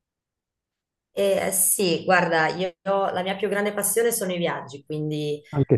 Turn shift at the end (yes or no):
no